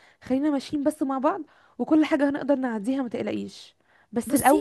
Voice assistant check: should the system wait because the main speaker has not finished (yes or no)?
yes